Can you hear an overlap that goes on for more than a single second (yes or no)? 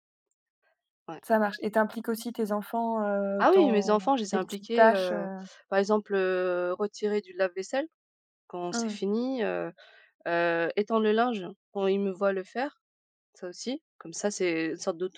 yes